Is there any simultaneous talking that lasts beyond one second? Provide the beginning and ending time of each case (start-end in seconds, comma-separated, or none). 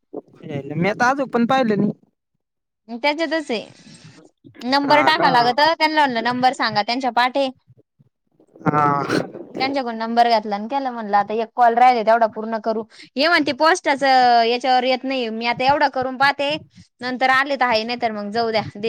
none